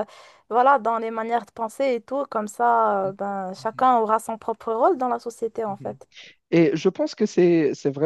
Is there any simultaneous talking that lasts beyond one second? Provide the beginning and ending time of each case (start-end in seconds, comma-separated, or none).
none